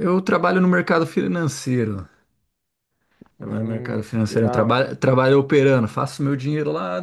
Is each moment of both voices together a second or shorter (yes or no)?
no